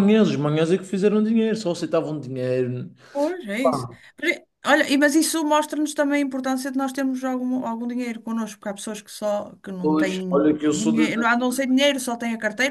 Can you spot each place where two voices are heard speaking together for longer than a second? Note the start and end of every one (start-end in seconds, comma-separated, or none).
9.8-11.1